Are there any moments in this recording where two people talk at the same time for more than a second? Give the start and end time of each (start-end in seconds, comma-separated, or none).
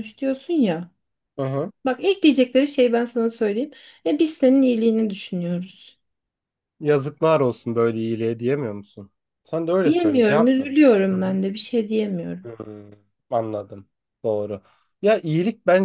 9.8-11.4